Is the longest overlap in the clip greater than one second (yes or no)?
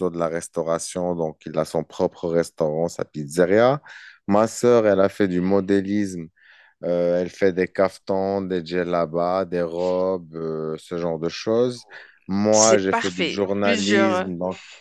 yes